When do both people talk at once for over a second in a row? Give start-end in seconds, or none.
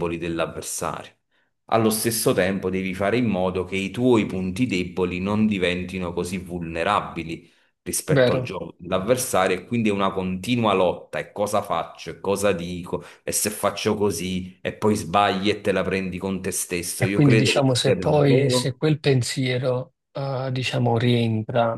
17.0-18.8